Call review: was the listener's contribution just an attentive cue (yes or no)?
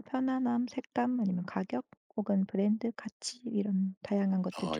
no